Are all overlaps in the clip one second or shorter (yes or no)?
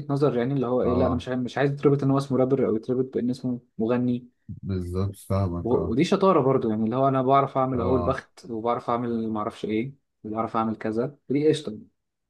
yes